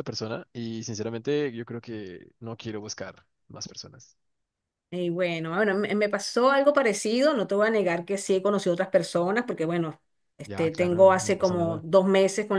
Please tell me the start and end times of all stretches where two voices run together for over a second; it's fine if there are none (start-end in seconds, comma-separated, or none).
10.4-11.8